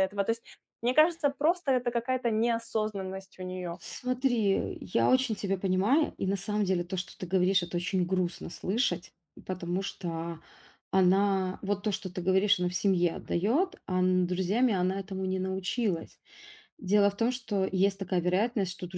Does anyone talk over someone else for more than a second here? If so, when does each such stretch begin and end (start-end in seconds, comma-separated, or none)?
none